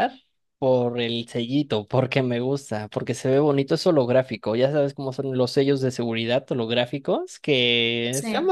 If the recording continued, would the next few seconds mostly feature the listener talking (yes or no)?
no